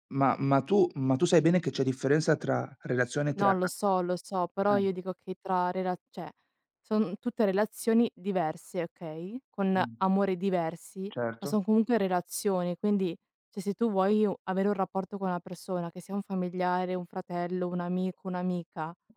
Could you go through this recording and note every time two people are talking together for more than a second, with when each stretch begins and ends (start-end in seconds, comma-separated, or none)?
none